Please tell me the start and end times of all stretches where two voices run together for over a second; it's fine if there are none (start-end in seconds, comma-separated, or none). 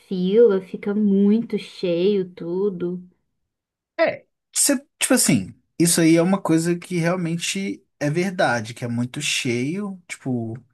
none